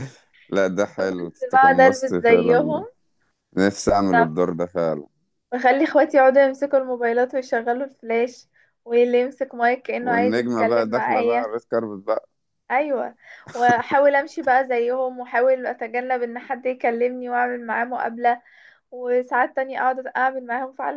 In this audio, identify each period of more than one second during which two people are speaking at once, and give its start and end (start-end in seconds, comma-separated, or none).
1.1-2.8, 10.0-11.5